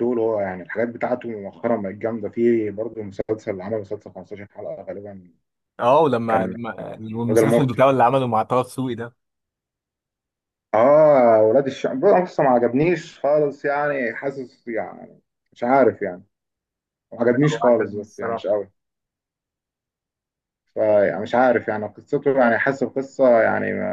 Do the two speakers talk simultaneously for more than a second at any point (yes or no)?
yes